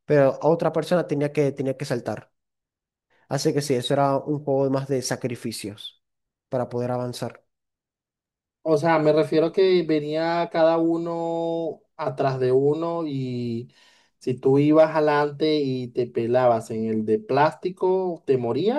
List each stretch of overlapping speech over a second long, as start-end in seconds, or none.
none